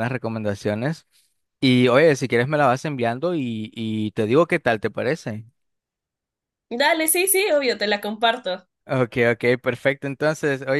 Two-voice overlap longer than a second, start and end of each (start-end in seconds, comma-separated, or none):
none